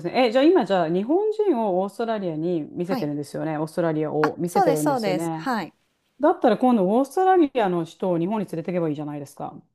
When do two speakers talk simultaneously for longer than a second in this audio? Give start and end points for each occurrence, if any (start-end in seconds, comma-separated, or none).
4.2-5.5